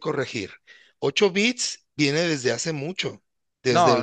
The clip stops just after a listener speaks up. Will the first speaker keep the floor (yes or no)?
no